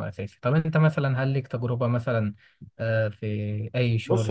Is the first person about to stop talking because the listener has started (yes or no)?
yes